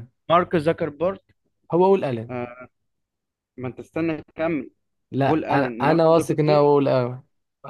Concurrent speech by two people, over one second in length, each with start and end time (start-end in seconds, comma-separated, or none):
5.2-6.6